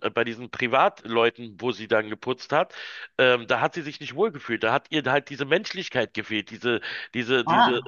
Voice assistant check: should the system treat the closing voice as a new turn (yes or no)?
no